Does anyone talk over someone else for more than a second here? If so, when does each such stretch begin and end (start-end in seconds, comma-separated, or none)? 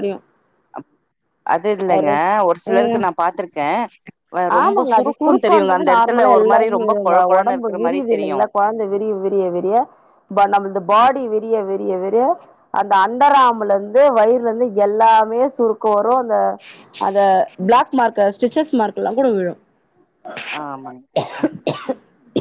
4.6-8.4